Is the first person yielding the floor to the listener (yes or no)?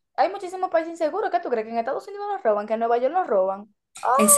yes